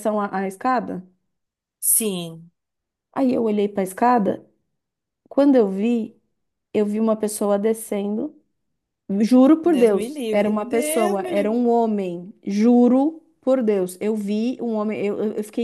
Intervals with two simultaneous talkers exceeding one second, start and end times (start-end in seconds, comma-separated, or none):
9.6-11.6